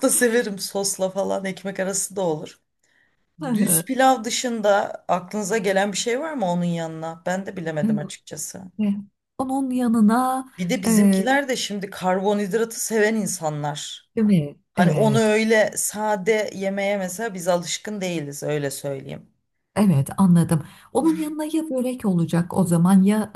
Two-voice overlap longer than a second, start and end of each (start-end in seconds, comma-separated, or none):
none